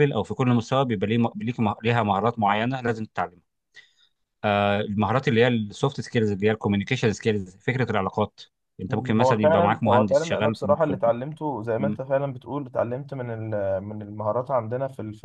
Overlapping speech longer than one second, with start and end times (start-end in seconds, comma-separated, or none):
8.9-11.1